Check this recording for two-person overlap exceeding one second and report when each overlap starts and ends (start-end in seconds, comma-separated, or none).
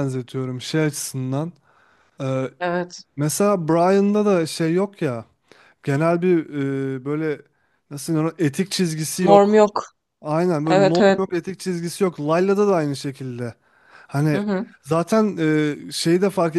none